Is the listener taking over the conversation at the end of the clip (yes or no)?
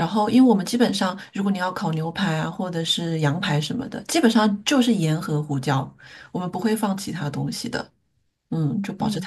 yes